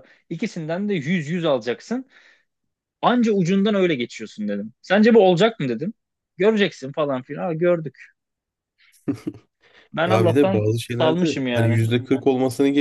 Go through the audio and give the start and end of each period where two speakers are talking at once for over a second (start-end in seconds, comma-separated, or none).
10.1-11.8